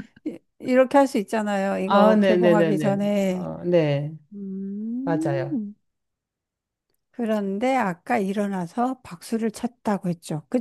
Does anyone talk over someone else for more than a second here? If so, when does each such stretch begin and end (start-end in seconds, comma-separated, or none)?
1.9-3.5